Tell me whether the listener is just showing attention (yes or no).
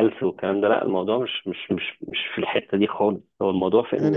no